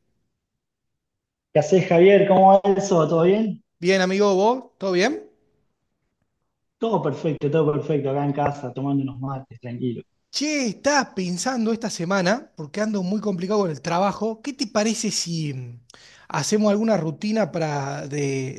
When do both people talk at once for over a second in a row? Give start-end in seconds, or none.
none